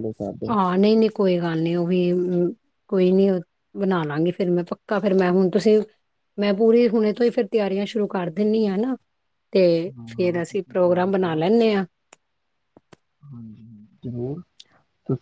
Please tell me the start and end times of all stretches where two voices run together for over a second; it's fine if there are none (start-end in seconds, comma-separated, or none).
10.1-11.4